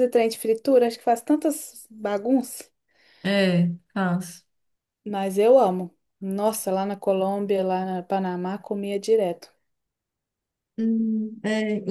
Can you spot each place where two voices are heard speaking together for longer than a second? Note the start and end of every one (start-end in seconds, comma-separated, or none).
none